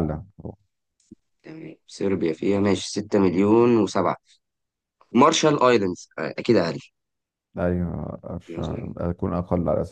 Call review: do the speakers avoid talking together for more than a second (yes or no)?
yes